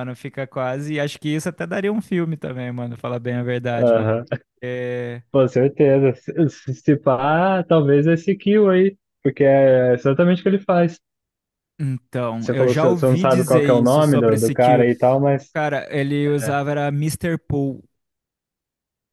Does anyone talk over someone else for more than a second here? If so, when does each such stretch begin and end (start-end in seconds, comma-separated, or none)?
12.4-14.9